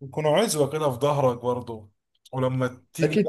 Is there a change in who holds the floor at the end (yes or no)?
yes